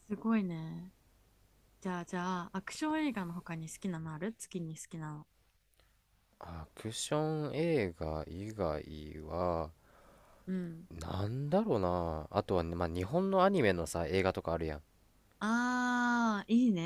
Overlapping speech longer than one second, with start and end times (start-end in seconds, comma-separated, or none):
none